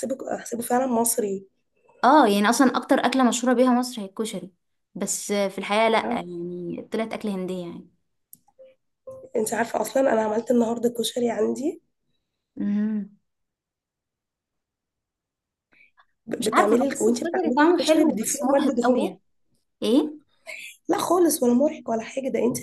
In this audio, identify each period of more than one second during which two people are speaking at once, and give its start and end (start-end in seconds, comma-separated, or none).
16.4-19.2